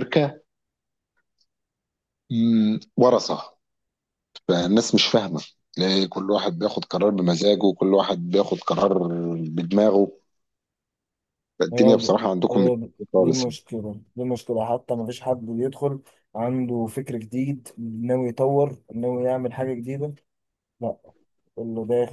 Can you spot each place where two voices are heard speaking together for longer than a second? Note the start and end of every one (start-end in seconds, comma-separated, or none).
11.7-13.6